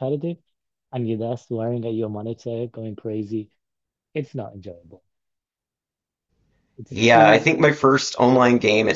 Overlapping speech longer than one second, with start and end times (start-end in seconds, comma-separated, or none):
none